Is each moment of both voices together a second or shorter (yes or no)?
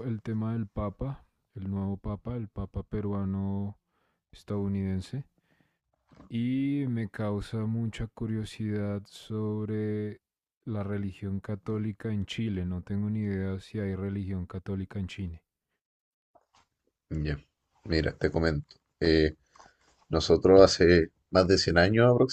yes